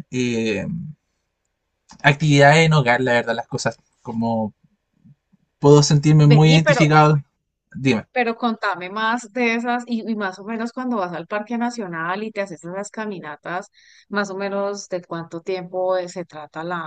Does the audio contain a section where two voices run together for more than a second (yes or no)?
no